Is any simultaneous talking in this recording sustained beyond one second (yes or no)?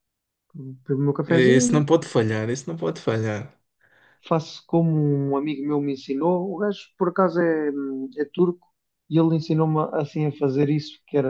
no